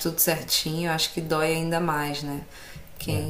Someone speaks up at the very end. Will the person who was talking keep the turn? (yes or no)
yes